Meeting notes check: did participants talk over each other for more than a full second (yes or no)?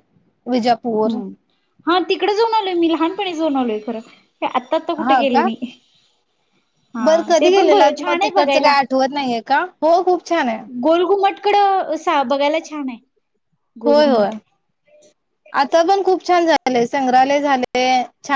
yes